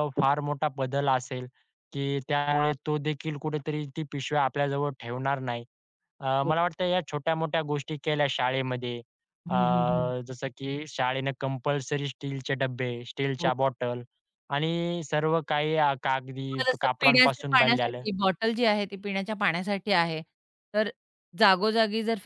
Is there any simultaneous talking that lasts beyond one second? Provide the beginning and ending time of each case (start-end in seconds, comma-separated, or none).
16.4-18.0